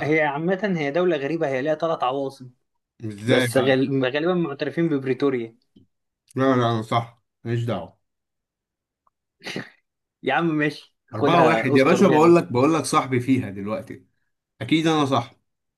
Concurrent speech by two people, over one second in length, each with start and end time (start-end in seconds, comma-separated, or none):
11.1-12.4